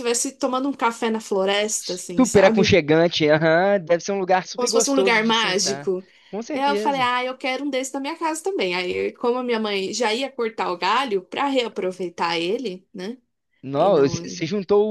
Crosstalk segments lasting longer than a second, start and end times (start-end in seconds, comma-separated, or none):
4.5-5.9